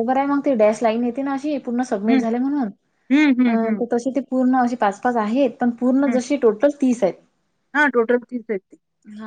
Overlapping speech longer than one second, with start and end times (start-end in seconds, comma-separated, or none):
none